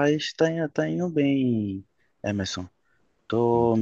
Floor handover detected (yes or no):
no